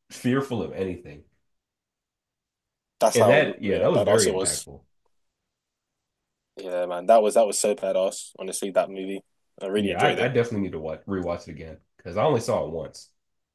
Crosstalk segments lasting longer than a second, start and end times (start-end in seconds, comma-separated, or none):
3.1-4.7